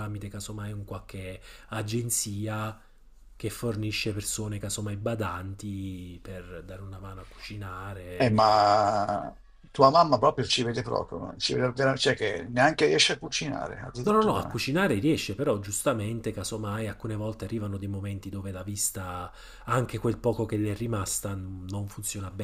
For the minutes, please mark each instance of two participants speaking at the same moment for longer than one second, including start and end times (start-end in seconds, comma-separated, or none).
none